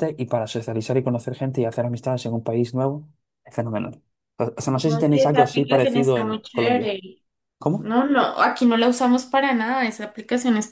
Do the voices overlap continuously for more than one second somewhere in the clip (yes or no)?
yes